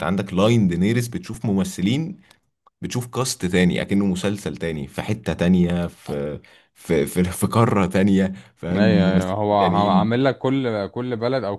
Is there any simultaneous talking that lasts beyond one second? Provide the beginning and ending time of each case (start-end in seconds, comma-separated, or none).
8.7-10.2